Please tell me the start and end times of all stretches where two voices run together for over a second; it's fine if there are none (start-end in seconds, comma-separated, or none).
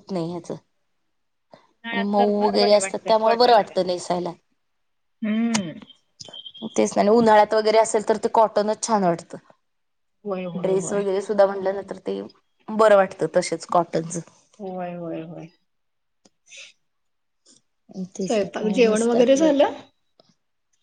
1.9-3.8